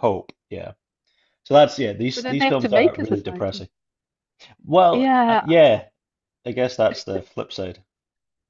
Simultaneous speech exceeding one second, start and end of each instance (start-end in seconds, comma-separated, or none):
2.1-3.7